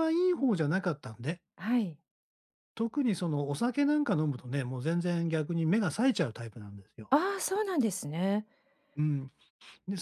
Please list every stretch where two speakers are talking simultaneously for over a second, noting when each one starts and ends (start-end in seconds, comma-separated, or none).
none